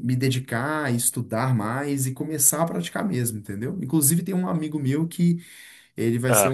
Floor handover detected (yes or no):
no